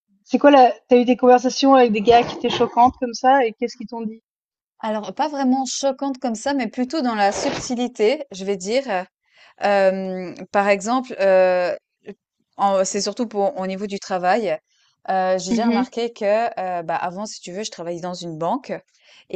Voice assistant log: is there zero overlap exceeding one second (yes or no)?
yes